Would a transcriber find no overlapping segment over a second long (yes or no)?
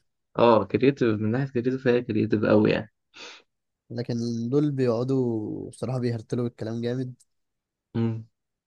yes